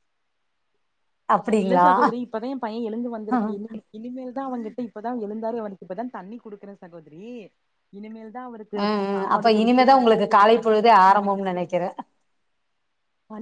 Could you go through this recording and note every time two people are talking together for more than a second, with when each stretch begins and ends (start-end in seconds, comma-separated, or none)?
8.9-11.7